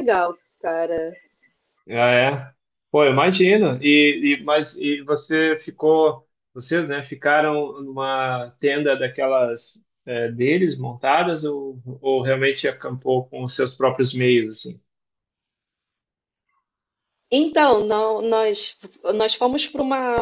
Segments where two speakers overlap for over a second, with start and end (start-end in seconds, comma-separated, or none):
none